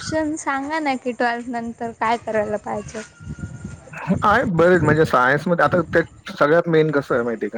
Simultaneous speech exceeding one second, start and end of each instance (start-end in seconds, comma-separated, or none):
none